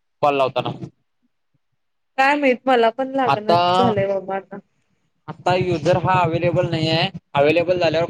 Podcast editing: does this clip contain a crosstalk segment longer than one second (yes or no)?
no